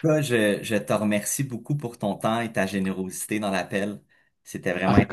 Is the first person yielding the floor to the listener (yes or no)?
yes